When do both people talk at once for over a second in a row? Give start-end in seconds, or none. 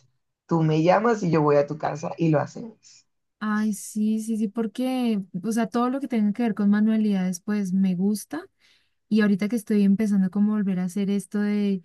none